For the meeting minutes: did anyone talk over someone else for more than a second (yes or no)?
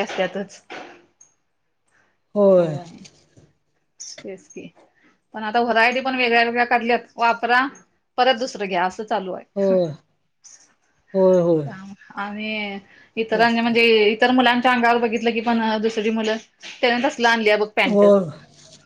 no